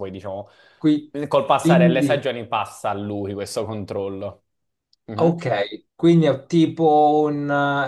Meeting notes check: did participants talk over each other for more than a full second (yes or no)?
no